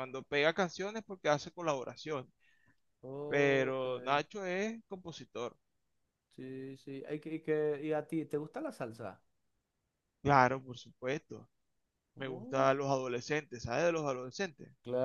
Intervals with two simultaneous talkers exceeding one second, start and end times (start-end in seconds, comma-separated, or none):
none